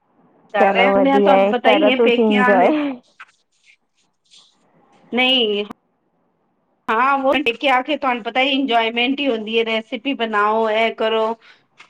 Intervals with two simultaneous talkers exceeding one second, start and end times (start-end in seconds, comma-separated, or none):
0.6-2.7